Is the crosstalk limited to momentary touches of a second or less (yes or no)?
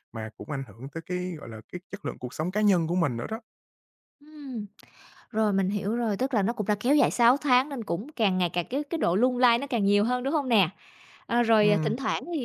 yes